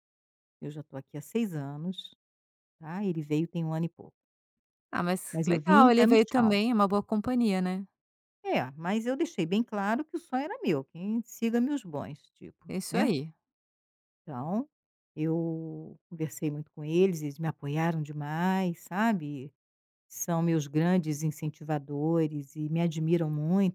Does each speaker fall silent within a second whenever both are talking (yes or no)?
no